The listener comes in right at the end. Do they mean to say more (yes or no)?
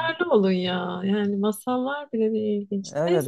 yes